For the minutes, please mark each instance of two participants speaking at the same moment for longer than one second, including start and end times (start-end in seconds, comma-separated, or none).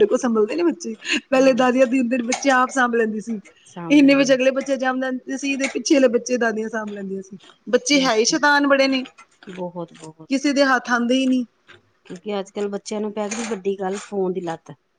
none